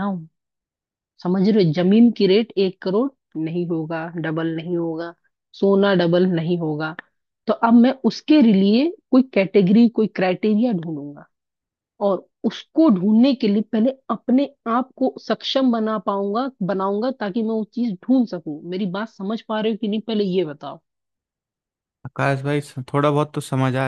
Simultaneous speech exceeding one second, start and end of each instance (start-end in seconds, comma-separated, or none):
none